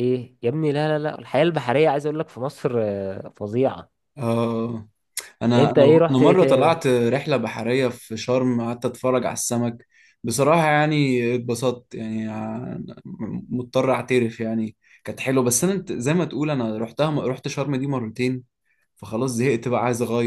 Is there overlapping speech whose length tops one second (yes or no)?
yes